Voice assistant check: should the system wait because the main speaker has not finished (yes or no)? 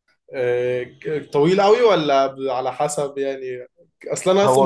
yes